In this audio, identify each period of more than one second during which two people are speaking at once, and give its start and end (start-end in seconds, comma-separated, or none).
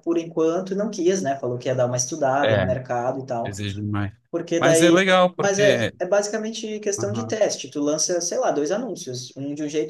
4.6-5.9